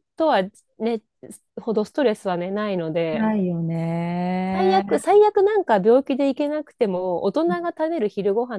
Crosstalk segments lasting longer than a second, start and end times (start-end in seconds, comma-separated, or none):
none